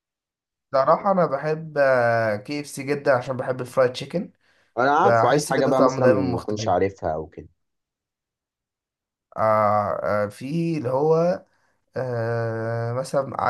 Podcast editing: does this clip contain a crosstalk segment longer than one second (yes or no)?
yes